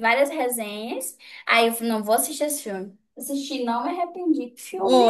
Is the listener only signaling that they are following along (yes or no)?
no